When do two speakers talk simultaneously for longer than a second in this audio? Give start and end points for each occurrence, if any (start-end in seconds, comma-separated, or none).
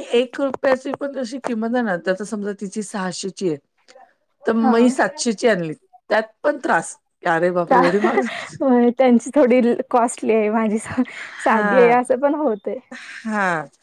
none